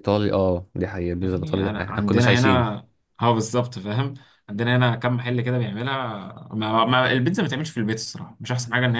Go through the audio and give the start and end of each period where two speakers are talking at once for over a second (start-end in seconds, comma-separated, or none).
1.2-2.7